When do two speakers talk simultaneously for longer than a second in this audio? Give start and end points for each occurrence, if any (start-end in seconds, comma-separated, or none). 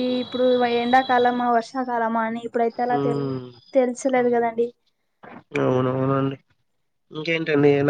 none